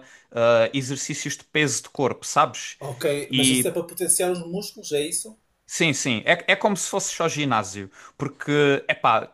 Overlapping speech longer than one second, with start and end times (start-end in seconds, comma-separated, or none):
none